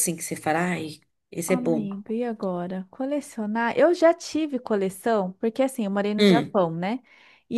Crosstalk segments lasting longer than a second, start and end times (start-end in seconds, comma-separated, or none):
none